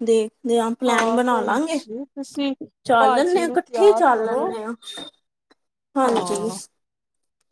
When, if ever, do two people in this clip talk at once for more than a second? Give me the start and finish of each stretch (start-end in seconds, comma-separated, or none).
3.0-4.4